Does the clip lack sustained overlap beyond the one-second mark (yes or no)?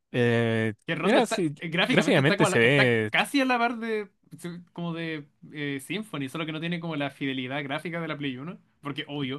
no